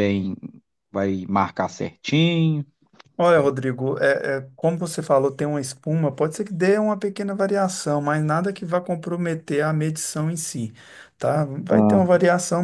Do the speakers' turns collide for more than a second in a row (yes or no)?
no